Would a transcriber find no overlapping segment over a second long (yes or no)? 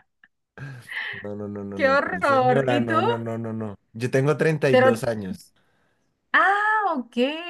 no